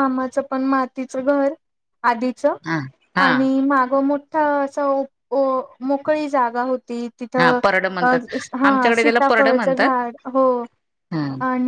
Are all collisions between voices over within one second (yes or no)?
no